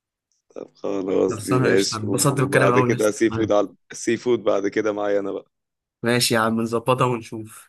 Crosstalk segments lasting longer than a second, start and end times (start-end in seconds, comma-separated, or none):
1.3-3.5